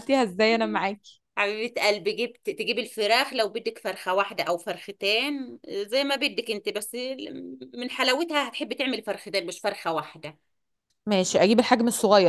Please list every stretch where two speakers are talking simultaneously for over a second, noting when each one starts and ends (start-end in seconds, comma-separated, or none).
none